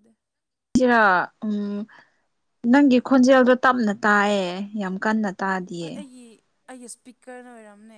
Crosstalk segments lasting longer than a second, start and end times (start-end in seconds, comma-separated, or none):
none